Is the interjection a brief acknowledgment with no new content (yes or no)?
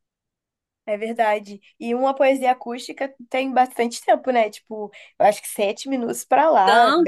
no